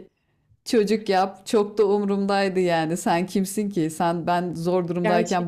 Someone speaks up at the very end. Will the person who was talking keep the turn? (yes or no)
yes